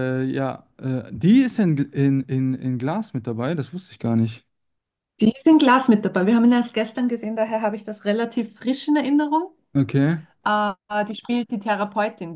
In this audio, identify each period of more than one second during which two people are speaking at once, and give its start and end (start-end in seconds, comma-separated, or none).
none